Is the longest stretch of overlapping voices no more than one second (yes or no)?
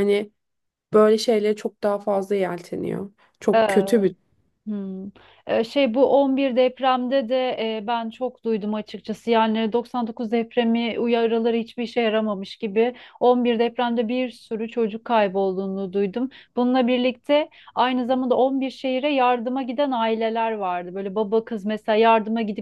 yes